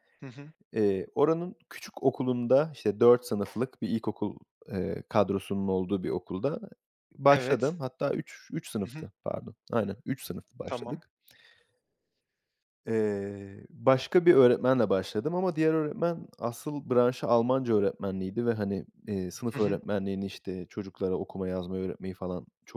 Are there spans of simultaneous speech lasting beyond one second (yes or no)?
no